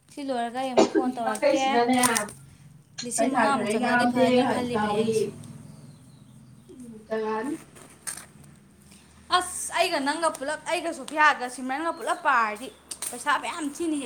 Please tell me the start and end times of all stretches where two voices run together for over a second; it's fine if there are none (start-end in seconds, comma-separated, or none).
3.1-5.1